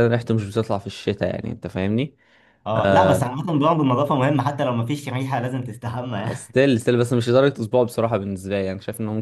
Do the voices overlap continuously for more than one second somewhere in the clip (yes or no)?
no